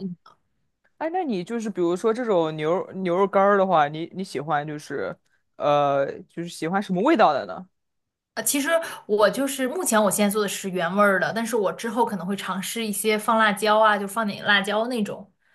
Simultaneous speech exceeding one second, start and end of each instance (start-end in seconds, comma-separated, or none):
none